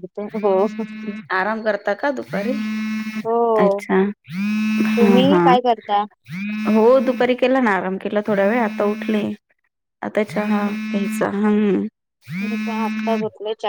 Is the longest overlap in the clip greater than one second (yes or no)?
no